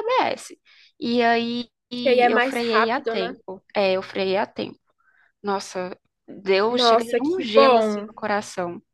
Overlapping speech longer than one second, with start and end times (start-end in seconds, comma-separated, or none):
2.0-3.3, 6.7-8.1